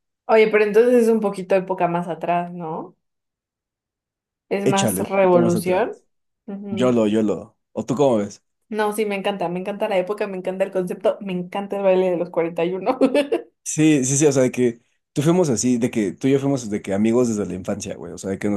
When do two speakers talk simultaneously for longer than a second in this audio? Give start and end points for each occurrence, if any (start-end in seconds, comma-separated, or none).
4.6-6.0